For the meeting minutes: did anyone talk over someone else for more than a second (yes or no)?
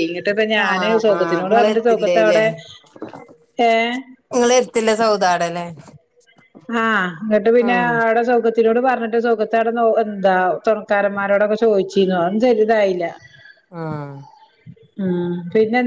yes